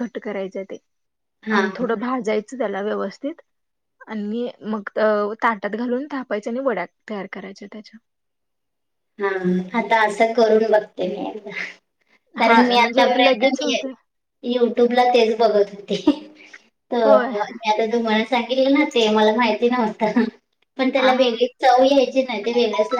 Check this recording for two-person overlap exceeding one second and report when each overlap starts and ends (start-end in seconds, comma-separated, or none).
12.4-13.8